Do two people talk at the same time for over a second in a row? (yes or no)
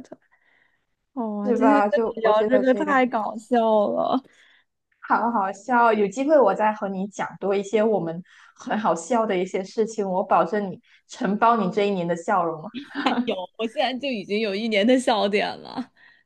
yes